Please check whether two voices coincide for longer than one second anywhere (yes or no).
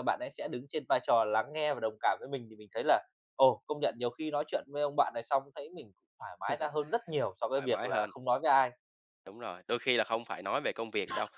no